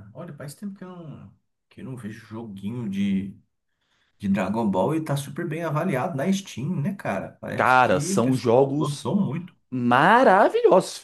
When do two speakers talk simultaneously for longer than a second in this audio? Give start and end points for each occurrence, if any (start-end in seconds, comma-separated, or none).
7.5-9.1